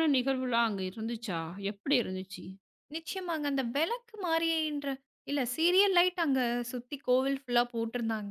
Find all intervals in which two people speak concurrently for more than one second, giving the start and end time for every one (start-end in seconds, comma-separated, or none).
none